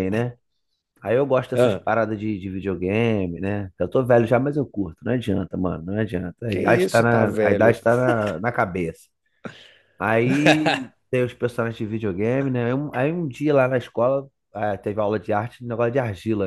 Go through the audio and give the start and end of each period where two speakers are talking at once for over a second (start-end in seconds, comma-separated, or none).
6.5-7.8